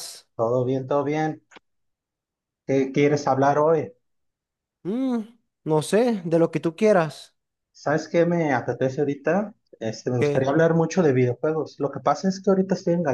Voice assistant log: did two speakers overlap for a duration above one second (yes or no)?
no